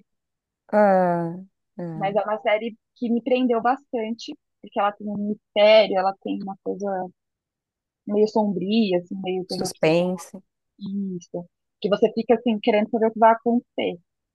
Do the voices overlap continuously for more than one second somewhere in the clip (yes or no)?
no